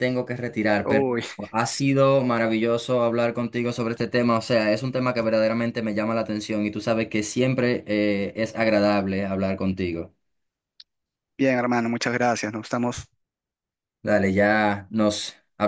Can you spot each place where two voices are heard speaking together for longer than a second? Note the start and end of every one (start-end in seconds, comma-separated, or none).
none